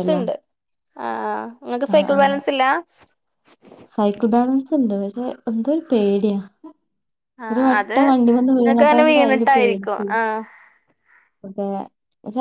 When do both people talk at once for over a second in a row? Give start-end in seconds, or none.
8.6-10.1